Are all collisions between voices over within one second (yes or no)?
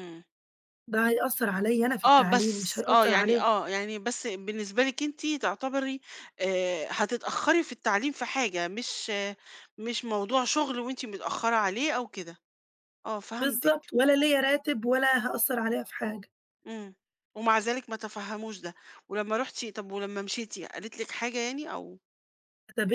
no